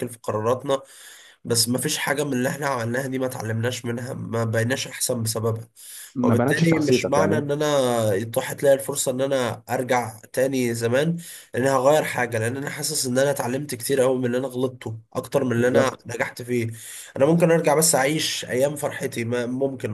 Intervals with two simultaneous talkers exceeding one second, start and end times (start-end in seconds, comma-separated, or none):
6.2-7.5